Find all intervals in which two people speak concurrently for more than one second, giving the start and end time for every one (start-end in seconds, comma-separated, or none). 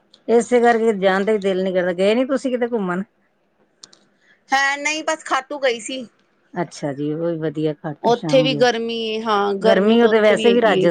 none